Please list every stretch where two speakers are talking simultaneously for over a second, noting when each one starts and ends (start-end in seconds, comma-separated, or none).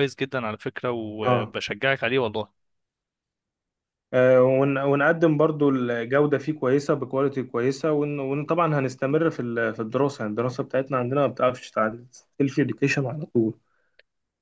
none